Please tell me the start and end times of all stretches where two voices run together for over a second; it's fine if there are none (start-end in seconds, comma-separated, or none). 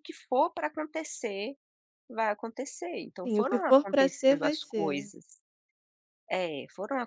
3.2-5.1